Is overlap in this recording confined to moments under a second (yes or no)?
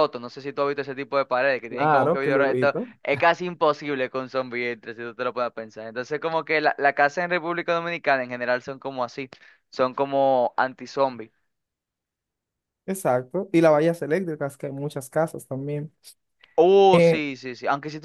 no